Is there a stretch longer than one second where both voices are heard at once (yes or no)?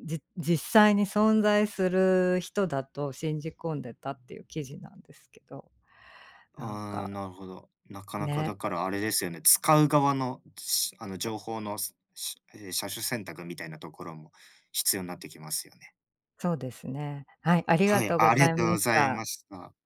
yes